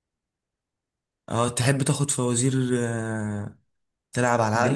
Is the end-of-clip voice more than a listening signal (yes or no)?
yes